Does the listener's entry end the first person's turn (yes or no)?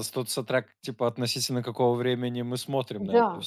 yes